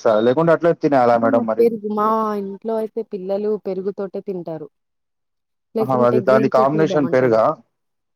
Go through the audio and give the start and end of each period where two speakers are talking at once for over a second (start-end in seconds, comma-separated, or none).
5.8-7.4